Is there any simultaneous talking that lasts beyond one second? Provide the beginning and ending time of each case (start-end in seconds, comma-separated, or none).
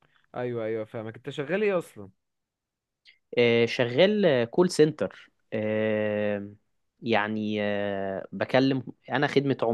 none